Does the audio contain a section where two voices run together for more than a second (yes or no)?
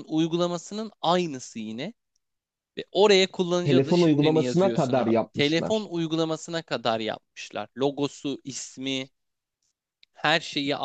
yes